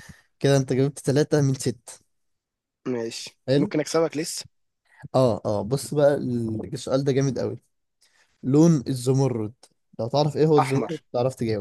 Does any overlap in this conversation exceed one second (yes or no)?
no